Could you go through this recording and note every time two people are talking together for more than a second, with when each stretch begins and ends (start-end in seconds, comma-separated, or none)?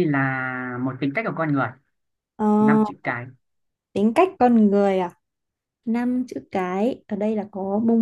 none